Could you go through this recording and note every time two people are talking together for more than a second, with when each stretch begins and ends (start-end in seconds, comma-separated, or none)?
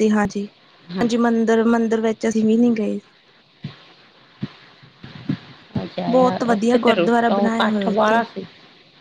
6.1-8.2